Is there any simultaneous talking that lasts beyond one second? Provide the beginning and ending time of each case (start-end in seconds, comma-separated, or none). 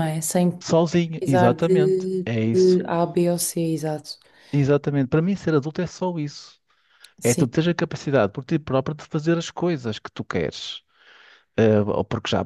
1.2-2.8